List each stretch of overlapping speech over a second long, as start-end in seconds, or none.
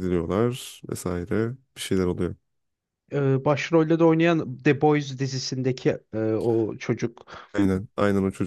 none